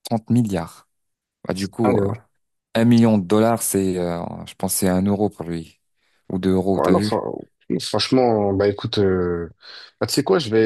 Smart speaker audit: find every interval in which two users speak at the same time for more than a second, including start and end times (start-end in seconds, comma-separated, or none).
none